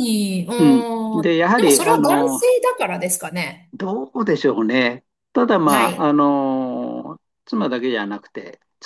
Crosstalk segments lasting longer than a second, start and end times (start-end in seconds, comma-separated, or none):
0.6-2.5